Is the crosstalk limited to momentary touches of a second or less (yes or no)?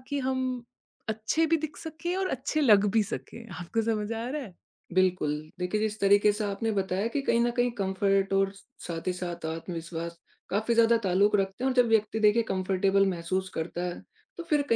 yes